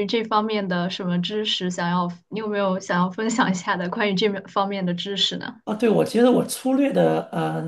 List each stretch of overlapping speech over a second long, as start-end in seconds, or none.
none